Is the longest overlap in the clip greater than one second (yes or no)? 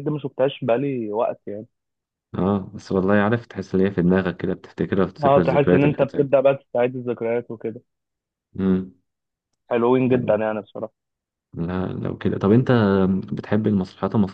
yes